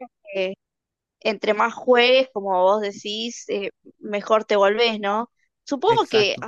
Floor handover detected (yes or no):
no